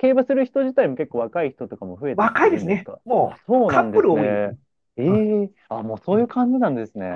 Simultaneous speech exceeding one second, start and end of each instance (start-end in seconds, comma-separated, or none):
2.1-4.5